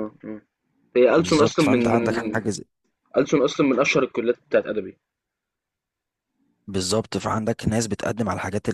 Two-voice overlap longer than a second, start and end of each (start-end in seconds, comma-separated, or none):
1.1-2.4